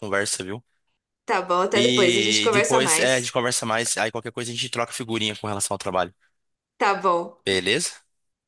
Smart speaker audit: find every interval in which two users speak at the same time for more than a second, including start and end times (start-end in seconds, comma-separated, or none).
1.7-3.4